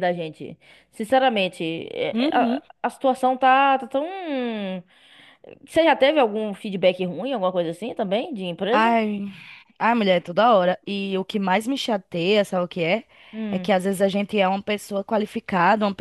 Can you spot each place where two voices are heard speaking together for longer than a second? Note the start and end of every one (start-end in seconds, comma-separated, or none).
none